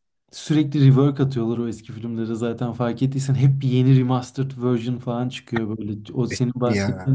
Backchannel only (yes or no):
yes